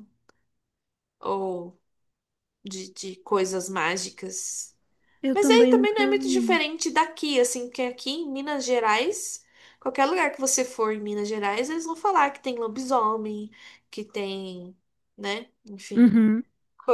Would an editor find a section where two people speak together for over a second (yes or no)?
yes